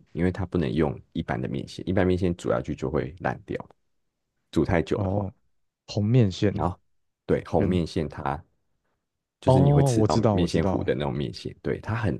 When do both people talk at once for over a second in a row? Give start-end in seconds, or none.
9.4-10.8